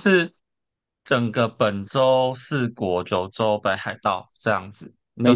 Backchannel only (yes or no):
yes